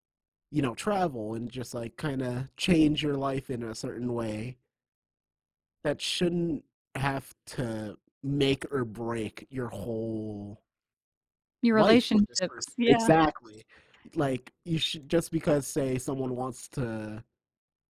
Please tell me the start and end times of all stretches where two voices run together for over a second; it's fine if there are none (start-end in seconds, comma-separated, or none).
11.7-13.1